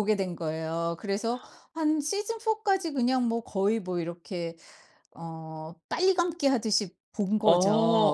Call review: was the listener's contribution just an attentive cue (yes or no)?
yes